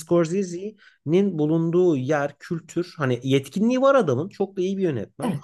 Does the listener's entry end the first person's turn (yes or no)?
no